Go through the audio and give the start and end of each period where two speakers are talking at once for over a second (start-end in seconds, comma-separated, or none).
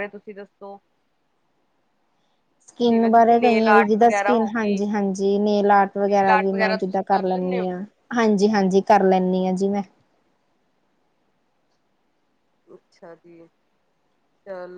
2.9-4.8, 6.1-7.8